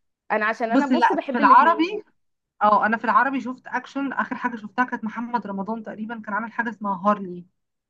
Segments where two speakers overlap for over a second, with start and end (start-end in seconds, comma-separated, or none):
0.7-2.0